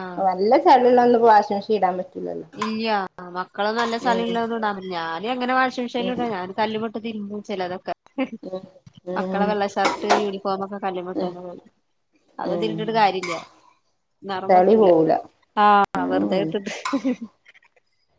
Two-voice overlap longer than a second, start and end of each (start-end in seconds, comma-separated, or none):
none